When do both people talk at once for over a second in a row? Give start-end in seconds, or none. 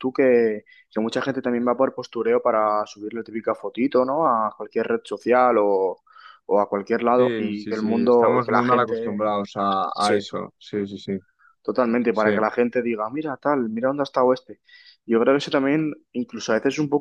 7.2-9.2